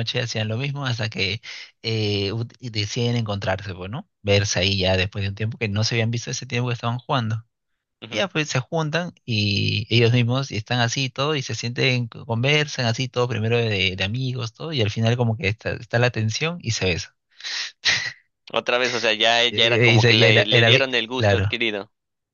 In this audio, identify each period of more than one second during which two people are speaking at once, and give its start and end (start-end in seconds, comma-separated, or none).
19.5-21.6